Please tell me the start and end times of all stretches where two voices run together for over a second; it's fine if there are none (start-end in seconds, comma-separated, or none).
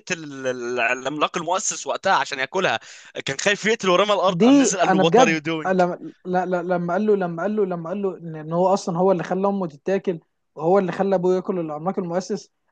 4.3-5.7